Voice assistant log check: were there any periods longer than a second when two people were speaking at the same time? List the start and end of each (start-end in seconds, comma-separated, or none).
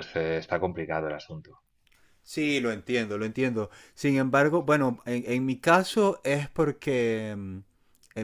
none